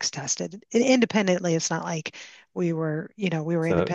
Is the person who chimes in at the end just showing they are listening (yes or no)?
no